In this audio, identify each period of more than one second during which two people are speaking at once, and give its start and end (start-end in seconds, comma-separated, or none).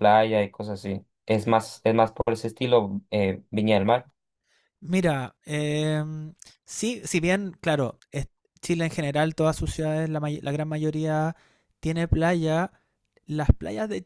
none